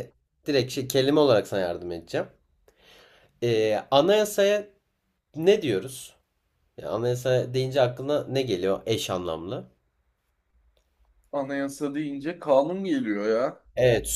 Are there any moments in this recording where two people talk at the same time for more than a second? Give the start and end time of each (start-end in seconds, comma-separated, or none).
none